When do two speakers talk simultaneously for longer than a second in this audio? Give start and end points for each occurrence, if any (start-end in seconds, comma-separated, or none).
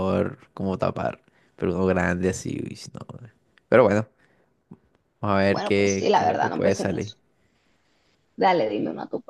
5.5-7.2